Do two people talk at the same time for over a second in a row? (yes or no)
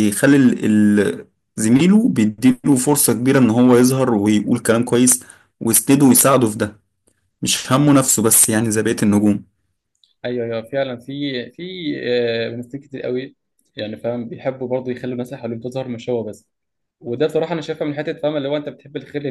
no